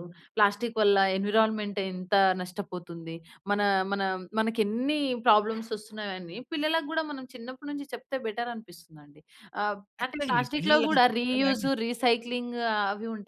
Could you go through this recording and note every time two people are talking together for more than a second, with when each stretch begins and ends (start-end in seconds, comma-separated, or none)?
10.0-11.7